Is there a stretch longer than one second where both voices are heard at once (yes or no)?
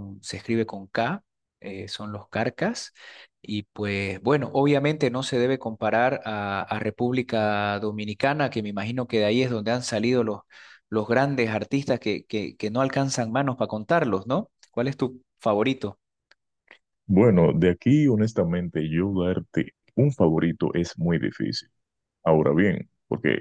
no